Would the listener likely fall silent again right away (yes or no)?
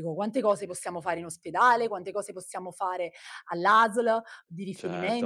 no